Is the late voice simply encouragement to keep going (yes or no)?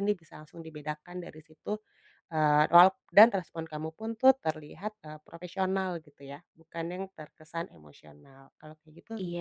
no